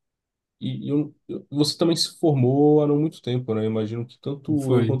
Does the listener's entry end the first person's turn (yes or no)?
no